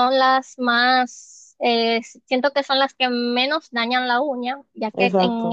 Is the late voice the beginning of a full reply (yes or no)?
no